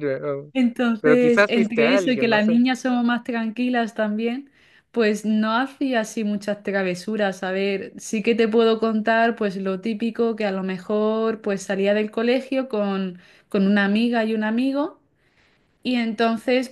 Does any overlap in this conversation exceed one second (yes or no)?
yes